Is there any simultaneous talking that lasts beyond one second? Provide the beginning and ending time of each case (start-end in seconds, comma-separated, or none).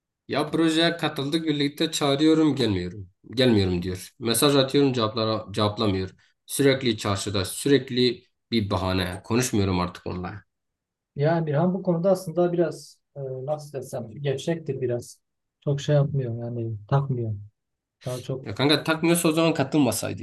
none